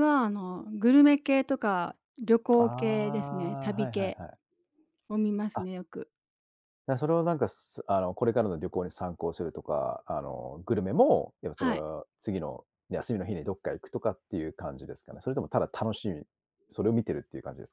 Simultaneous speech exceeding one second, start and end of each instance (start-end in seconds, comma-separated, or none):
2.6-4.2